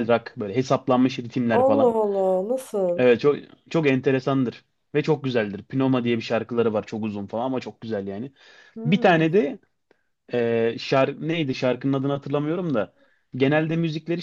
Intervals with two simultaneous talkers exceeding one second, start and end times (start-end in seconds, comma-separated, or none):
none